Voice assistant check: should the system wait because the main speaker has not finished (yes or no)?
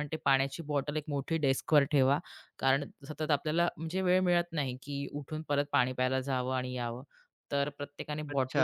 no